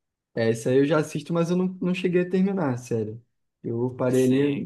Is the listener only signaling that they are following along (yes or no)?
no